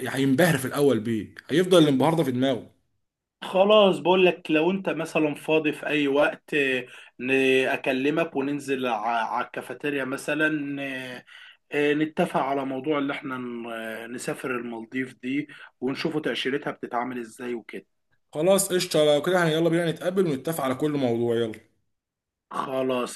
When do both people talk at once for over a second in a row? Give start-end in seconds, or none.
none